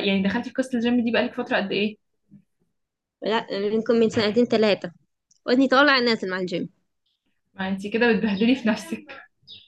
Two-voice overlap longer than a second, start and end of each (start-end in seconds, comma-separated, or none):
none